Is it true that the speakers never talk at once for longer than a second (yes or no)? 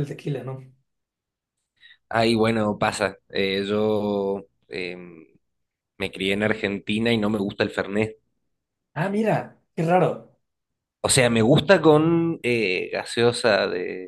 yes